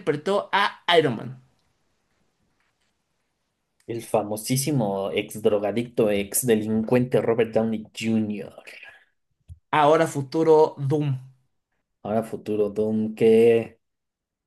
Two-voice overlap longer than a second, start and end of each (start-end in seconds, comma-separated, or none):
none